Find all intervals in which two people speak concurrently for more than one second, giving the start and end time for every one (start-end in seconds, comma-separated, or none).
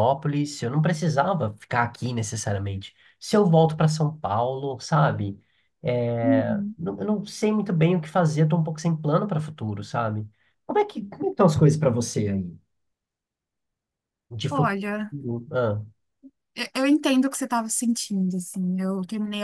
none